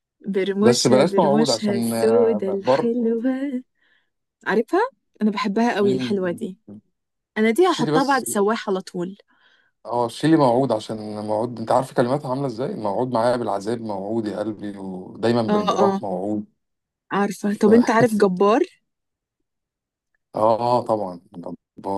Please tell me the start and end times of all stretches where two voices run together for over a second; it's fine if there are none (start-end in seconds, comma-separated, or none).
0.6-2.9